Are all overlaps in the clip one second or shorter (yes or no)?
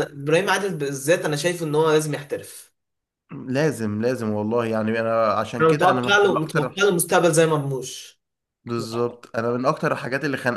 no